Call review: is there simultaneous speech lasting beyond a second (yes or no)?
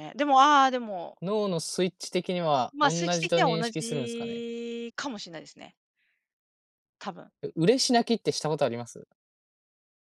yes